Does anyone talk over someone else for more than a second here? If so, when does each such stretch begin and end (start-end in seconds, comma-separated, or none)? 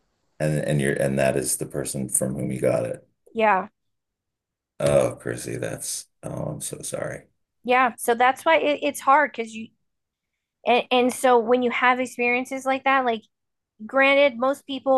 none